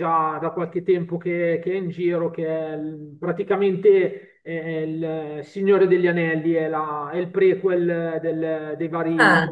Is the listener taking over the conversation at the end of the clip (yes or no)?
no